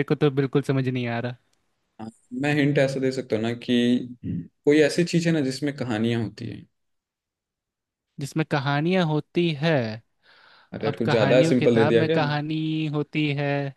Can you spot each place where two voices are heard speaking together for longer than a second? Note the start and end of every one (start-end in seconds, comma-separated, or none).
10.8-12.2